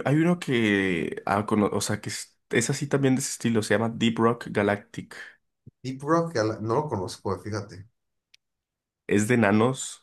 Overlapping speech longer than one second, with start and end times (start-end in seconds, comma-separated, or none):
none